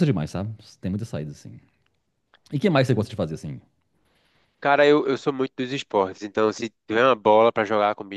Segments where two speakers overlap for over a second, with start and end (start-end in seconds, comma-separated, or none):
none